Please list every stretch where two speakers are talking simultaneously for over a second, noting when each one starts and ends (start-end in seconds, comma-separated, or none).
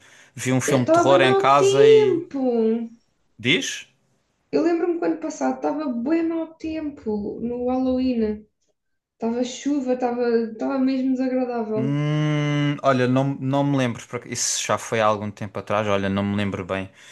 0.7-2.2